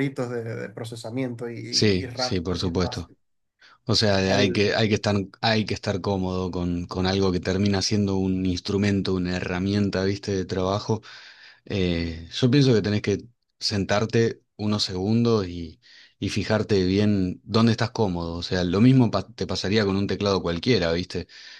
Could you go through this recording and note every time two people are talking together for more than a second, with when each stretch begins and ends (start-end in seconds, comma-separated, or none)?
1.7-3.1